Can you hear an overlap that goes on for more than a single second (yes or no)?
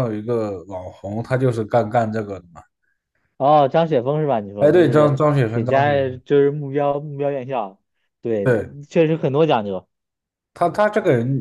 yes